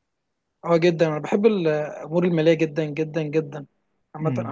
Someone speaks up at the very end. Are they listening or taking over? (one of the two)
listening